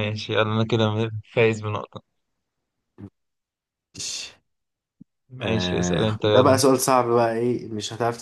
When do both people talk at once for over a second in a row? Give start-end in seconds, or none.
5.4-6.6